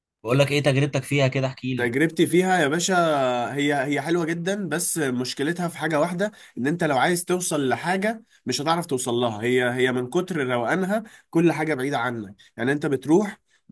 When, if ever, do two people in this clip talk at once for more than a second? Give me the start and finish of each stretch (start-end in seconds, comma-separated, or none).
none